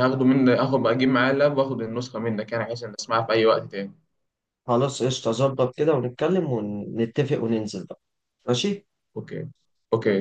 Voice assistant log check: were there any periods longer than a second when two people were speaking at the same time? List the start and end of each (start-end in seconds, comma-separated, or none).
none